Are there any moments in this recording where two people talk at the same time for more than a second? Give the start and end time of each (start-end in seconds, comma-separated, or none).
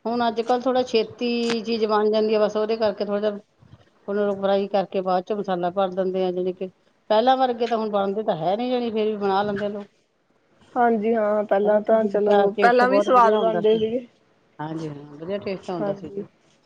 11.6-13.8